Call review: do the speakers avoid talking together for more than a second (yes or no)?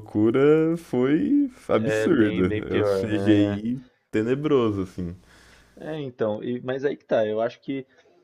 no